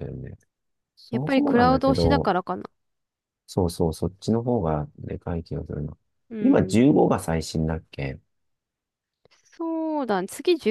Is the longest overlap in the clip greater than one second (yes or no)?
yes